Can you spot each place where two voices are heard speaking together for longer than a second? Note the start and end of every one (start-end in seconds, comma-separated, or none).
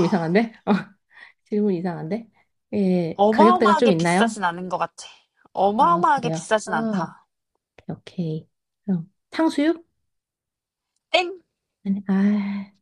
3.2-4.4, 5.8-7.1